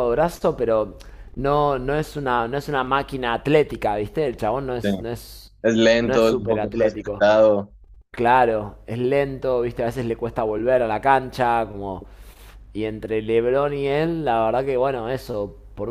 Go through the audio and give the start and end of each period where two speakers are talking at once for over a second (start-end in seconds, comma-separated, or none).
6.0-7.3